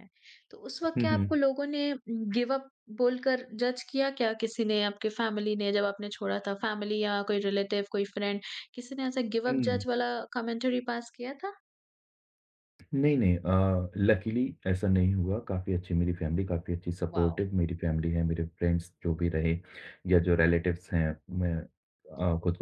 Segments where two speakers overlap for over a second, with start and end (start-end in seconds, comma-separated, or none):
none